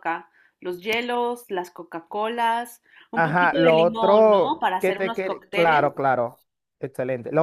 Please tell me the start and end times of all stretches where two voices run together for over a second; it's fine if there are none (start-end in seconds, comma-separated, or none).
3.1-5.8